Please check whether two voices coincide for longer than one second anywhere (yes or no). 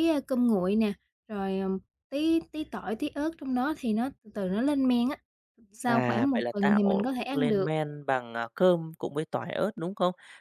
yes